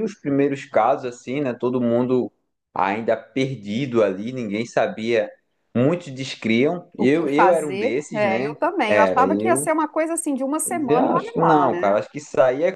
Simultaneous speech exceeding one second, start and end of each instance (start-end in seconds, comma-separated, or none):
7.0-9.7, 10.7-12.0